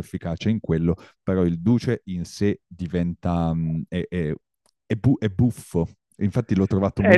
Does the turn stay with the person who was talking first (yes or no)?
no